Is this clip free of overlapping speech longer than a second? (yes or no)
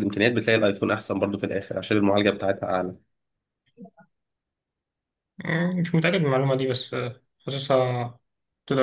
yes